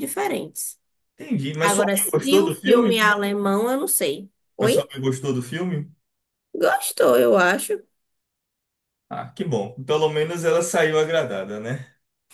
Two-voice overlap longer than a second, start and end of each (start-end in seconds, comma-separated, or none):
1.6-3.0